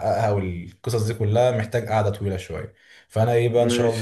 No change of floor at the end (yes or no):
yes